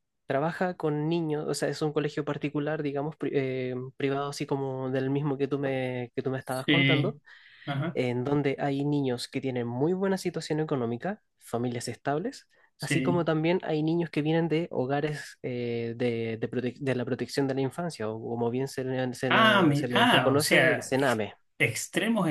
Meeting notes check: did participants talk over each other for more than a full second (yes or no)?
yes